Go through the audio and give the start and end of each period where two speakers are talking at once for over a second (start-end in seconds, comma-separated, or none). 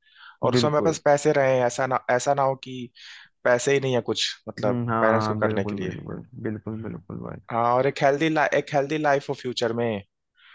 4.6-5.9